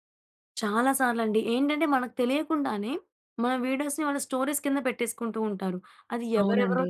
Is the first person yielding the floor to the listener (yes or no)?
no